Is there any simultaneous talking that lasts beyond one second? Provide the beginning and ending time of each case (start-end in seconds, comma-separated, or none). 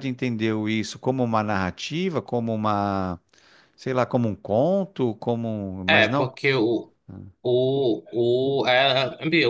none